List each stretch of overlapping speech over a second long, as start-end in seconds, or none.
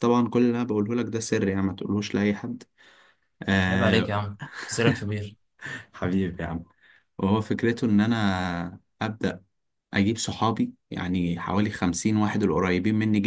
none